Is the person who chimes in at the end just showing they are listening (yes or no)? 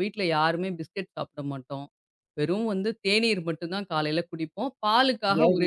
yes